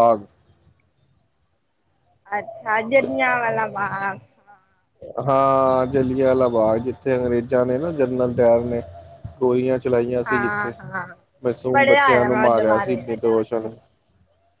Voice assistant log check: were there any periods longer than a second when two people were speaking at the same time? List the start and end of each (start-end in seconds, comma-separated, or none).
11.7-13.0